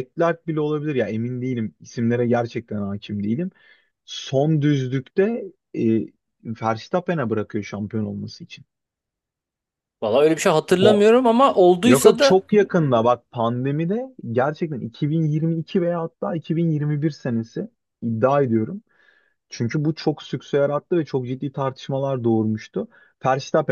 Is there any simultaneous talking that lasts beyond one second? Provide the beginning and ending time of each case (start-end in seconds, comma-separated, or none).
none